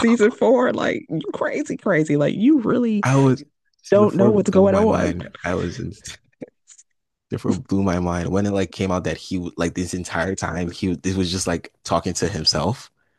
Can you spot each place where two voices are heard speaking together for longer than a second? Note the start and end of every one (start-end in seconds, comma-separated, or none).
3.9-5.1